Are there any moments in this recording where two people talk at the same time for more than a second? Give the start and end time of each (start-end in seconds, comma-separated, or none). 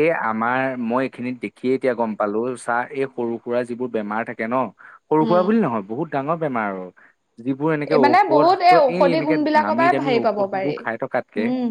8.0-10.7